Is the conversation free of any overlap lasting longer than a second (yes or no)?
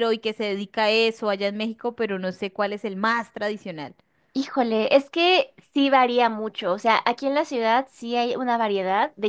yes